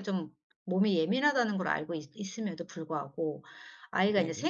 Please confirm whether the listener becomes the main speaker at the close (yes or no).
no